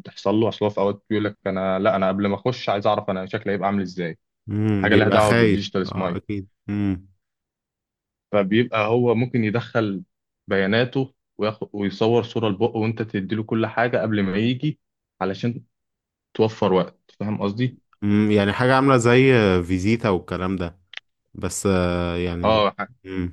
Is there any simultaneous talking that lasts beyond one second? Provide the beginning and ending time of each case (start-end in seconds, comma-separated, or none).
4.8-6.2